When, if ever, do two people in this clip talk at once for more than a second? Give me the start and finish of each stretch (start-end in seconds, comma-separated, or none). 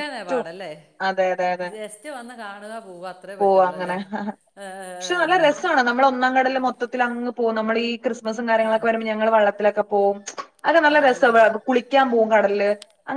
none